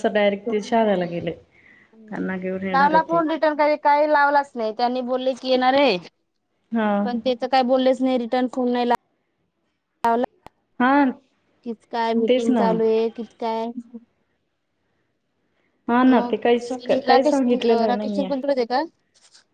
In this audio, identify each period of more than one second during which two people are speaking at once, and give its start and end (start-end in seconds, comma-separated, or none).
16.2-18.3